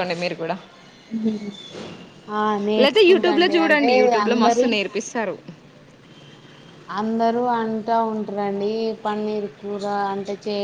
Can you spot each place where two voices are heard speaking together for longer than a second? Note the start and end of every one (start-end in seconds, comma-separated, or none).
2.8-4.7